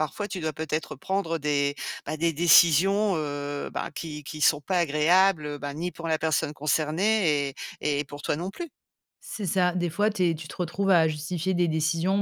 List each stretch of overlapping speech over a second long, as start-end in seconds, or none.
none